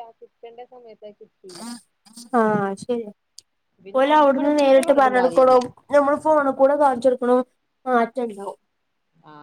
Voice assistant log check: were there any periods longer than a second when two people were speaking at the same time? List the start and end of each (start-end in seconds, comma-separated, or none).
4.0-5.6